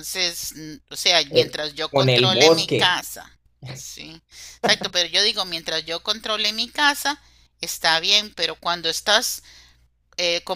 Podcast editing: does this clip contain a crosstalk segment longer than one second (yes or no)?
yes